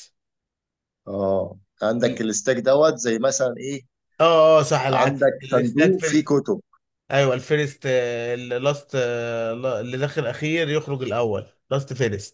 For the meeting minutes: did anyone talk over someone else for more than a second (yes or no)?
yes